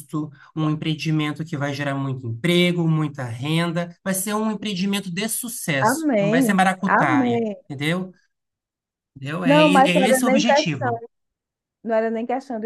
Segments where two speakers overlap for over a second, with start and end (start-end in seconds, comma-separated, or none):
5.8-7.6, 9.4-11.0